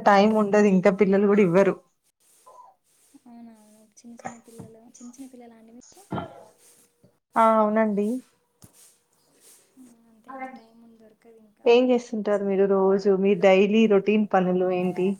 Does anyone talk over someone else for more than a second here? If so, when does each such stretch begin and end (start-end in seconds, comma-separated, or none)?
none